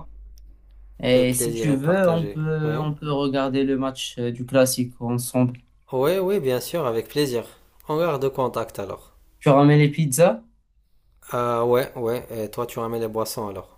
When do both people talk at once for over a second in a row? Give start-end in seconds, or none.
1.1-2.9